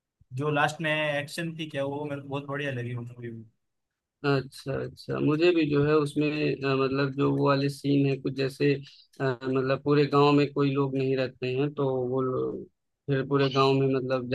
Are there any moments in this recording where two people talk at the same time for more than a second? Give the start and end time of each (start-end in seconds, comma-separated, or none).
none